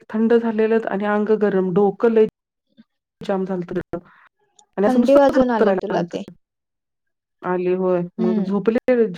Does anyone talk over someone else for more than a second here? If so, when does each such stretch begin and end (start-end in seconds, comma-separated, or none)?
4.9-6.1